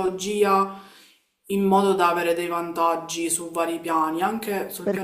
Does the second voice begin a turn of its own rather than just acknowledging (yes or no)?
yes